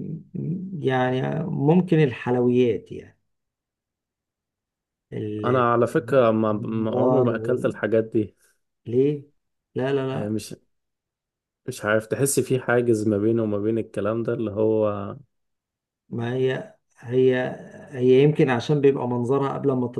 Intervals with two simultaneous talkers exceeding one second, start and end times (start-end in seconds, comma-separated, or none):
6.5-7.7